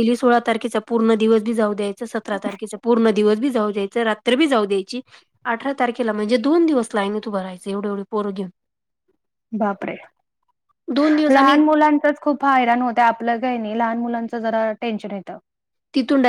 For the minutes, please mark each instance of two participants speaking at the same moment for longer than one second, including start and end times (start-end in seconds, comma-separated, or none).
none